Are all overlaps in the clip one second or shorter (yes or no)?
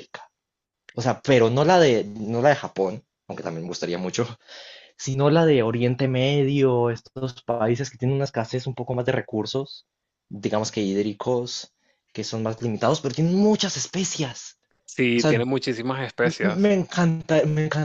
yes